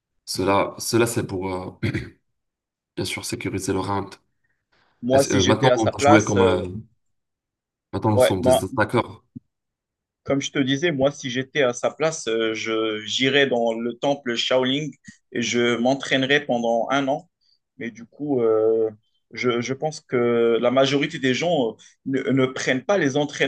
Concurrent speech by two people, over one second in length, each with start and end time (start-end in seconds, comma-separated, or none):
5.1-6.6